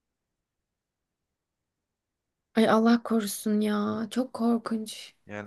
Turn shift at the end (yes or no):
yes